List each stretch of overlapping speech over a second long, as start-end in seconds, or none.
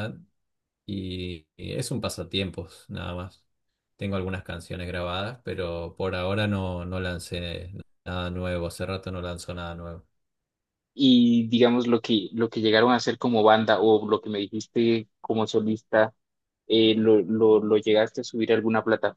none